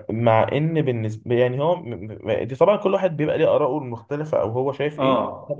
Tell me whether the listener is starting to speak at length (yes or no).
yes